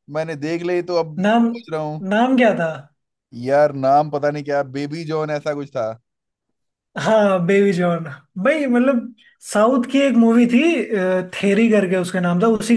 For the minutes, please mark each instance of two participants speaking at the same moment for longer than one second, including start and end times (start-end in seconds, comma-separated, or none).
none